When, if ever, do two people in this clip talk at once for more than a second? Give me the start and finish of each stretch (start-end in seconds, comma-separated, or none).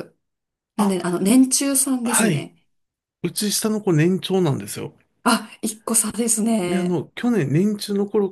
none